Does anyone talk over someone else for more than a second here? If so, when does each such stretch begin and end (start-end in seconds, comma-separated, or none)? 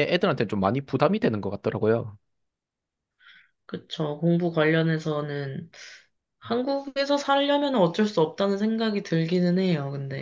none